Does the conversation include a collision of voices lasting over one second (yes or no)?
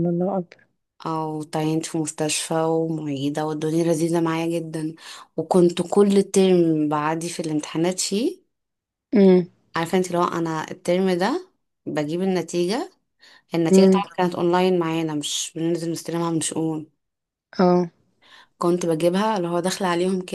no